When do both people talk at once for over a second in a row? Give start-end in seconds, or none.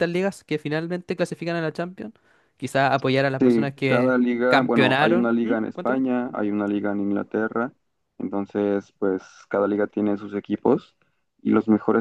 3.4-6.0